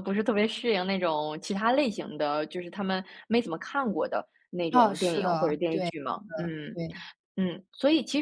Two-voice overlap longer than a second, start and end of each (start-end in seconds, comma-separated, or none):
4.7-6.8